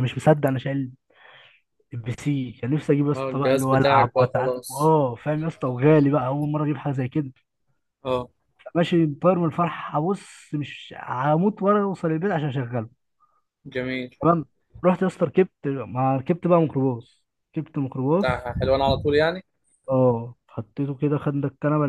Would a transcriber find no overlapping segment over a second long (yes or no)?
no